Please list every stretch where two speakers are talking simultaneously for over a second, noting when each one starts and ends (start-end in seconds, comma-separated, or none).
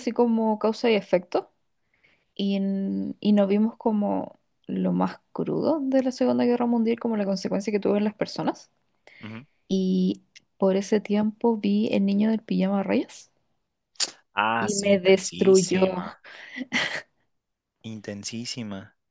14.6-16.0